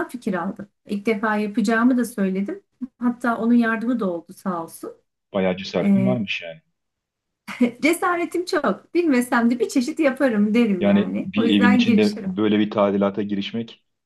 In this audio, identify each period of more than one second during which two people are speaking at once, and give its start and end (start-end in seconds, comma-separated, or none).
10.8-12.3